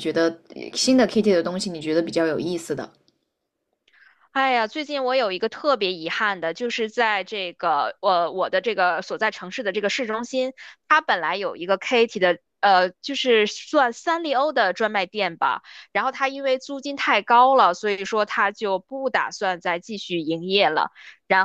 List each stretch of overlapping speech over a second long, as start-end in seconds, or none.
none